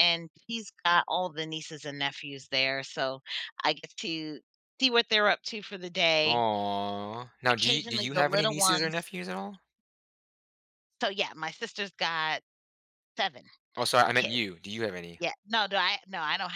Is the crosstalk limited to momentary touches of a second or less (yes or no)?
no